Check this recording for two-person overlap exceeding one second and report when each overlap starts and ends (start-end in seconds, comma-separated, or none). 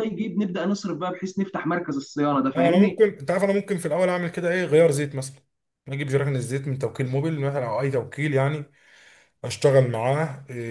none